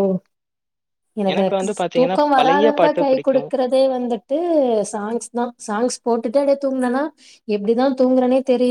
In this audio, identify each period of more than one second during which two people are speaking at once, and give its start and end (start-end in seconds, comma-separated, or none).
1.3-3.5